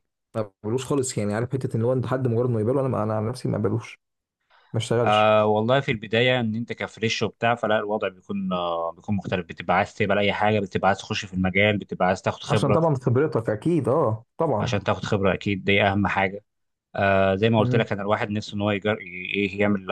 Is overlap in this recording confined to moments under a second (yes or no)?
yes